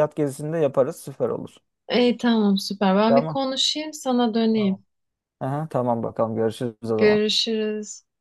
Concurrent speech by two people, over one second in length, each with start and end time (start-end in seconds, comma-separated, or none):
none